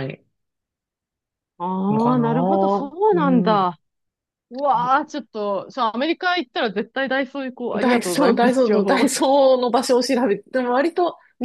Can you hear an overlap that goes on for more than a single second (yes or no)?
yes